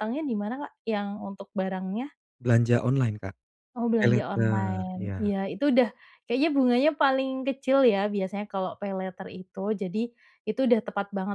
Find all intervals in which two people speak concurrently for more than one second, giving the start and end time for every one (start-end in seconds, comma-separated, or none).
4.0-5.3